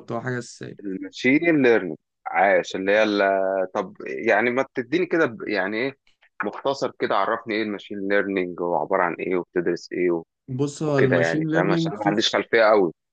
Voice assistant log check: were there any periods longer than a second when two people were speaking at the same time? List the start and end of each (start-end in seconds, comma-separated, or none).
10.8-12.1